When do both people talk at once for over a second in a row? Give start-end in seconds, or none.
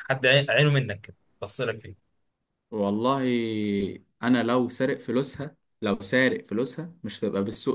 none